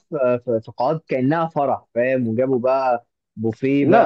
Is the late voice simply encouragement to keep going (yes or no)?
yes